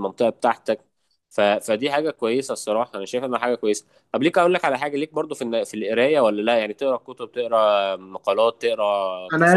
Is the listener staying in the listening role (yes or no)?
no